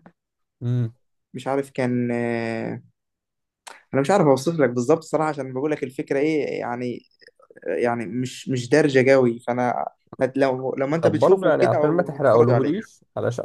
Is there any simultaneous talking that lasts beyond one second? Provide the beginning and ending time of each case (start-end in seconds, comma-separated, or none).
11.0-12.7